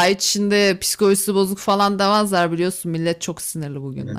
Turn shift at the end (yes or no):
yes